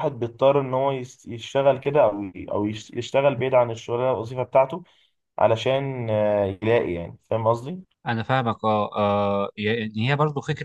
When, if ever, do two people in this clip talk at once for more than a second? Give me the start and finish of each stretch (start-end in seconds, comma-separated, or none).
none